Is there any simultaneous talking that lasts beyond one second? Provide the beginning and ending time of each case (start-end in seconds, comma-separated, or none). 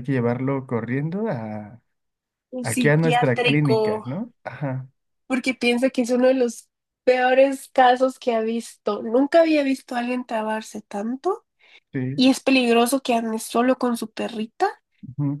2.6-4.0